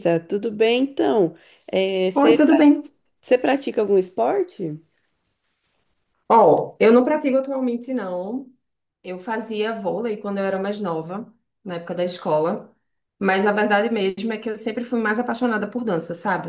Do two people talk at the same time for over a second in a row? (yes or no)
no